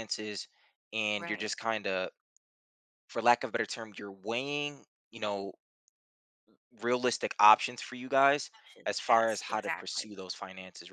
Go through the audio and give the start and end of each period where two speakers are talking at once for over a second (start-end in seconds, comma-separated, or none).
8.5-10.1